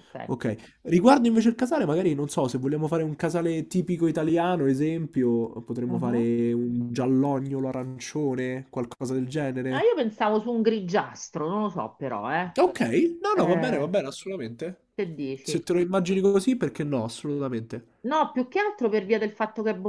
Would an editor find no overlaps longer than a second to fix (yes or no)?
yes